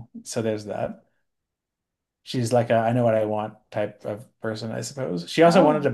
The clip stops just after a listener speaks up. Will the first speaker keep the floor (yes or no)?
yes